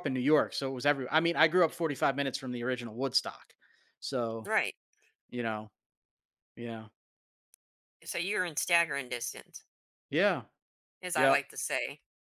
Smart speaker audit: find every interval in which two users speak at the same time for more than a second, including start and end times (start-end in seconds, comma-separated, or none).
none